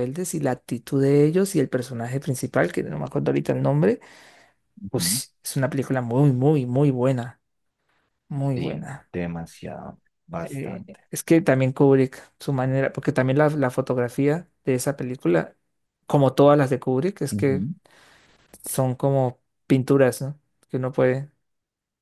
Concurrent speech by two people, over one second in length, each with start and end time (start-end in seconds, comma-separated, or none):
none